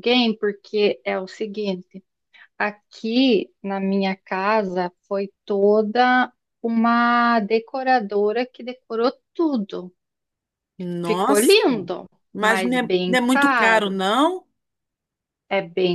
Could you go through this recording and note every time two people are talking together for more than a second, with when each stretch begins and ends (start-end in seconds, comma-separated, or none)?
12.3-14.0